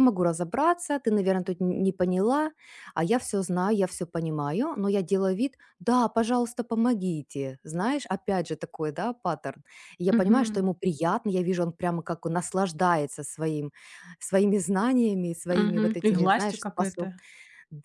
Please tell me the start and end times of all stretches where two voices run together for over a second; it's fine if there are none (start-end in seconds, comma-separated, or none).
15.5-17.1